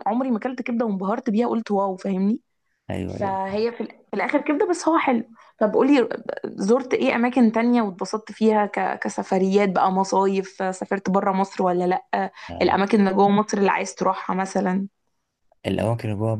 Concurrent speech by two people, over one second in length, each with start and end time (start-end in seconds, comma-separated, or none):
none